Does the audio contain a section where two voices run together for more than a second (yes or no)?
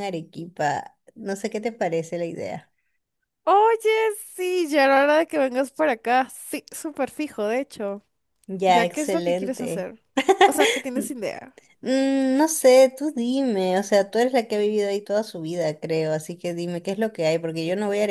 yes